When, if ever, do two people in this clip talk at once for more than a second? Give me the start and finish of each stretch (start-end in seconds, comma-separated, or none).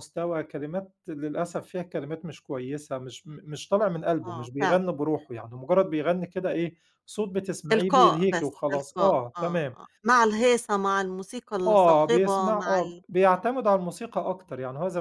7.7-9.7, 11.7-13.5